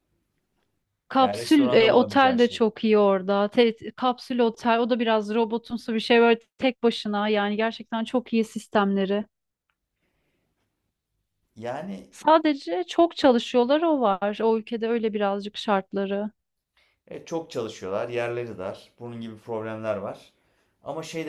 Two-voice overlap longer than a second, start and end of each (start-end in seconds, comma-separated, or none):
1.2-2.6